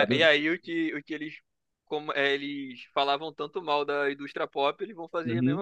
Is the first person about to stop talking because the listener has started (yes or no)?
yes